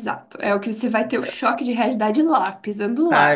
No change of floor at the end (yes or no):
no